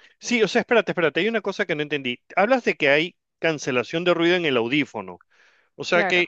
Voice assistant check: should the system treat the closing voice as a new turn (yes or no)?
no